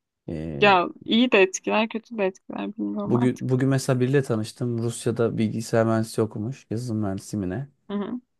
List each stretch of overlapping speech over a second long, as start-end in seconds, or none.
none